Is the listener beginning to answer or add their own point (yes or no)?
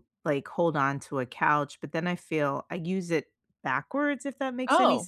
no